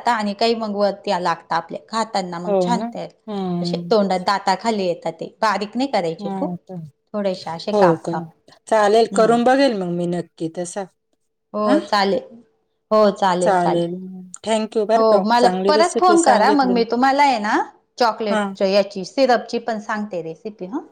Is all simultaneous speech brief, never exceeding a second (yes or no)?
no